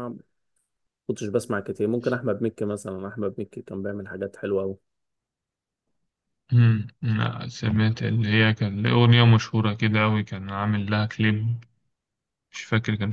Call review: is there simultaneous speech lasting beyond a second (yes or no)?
no